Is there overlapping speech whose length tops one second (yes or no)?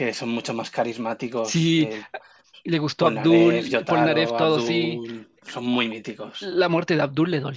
yes